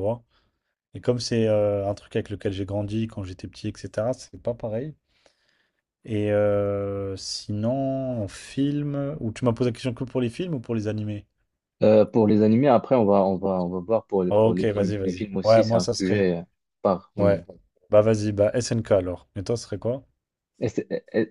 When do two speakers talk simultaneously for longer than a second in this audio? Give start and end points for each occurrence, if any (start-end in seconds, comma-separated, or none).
14.3-16.3